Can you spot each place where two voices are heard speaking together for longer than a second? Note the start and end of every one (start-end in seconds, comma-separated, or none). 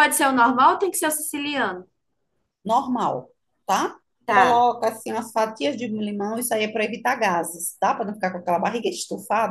none